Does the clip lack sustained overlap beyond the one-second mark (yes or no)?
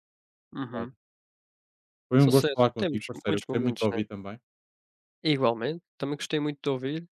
no